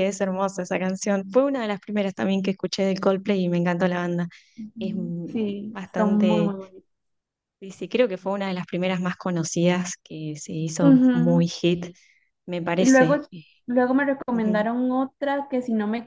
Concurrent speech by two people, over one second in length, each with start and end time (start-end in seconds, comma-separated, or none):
4.8-6.5